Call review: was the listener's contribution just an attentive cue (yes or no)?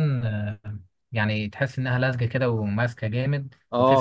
no